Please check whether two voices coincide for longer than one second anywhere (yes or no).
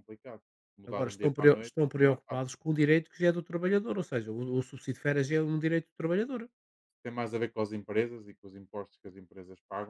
yes